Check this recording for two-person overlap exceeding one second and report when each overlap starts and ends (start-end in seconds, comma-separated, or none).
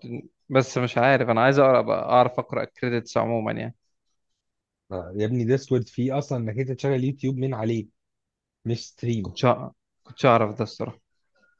none